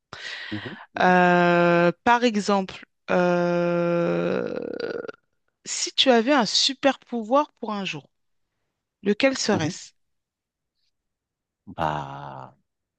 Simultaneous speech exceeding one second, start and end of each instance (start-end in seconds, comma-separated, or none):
none